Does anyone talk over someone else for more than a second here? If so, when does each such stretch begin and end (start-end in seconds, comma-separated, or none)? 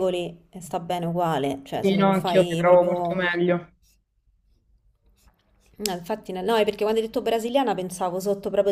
1.8-3.2